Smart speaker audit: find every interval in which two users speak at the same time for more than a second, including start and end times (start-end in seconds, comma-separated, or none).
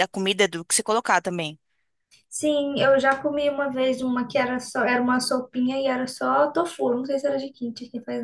none